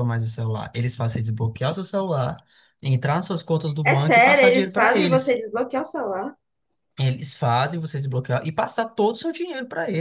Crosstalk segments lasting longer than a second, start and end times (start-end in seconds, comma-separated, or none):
3.8-5.3